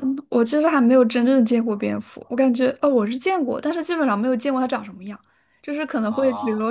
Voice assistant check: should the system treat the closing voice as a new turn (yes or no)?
no